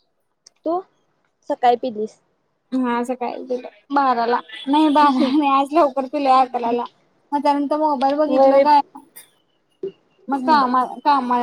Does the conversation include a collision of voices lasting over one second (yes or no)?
no